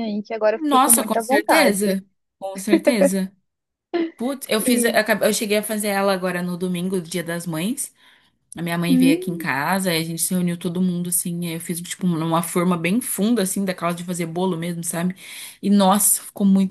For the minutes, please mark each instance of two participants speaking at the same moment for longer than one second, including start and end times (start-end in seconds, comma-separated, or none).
0.6-2.0